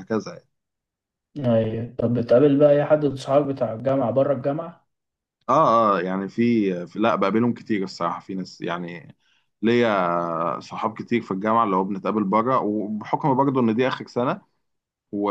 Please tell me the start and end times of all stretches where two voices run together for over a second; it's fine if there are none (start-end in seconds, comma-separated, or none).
none